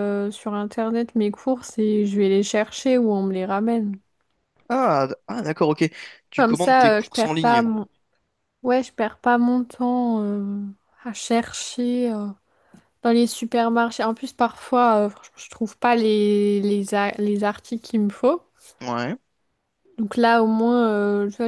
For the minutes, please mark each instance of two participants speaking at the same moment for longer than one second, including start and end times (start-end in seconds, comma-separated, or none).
6.4-7.7